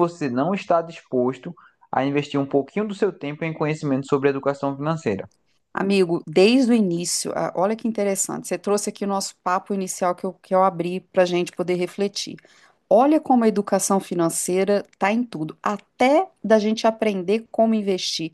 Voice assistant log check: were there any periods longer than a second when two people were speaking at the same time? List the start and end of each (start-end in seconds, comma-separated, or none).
none